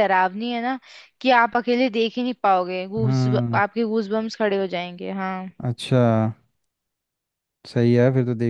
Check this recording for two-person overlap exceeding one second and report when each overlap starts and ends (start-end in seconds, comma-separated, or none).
none